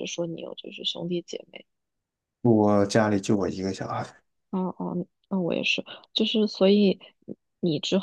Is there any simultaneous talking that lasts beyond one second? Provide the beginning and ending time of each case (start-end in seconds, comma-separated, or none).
none